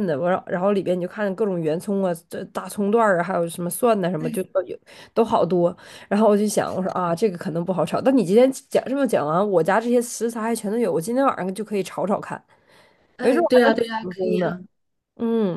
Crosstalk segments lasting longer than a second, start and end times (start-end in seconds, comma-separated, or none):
13.2-14.6